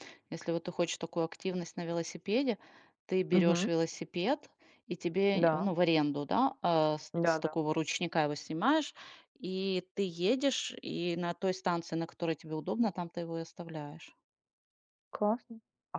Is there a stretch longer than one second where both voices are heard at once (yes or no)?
no